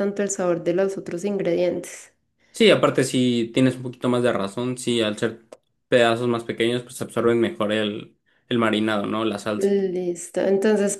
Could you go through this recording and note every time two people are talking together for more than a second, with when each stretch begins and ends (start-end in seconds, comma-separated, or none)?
none